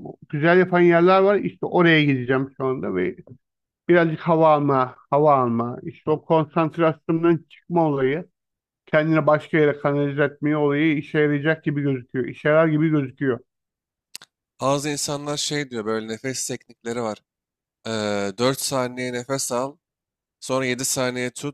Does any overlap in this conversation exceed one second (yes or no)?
no